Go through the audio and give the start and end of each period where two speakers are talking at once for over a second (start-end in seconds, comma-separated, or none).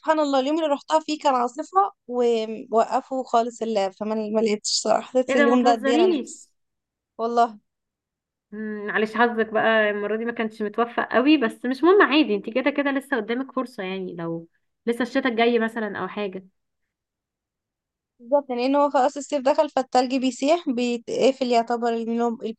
5.3-6.5